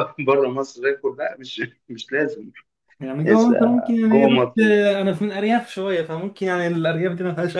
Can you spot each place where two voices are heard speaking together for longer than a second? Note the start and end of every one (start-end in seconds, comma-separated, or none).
3.2-4.6